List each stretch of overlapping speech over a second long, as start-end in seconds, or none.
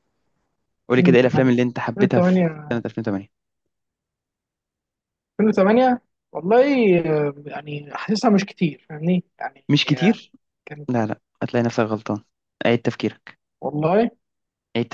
1.0-2.8